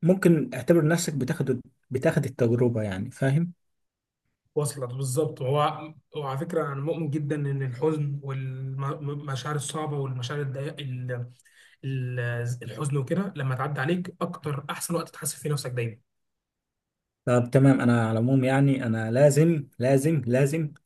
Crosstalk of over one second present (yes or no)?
no